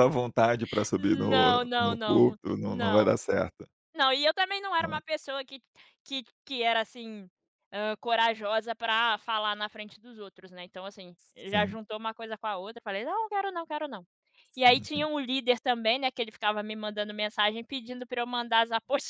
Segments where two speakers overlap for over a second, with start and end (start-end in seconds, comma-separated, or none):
1.0-3.1